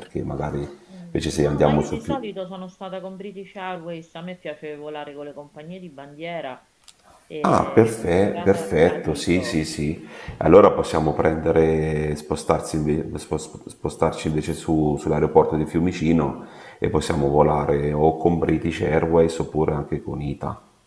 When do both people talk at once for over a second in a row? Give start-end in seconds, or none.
1.1-2.3, 7.4-9.6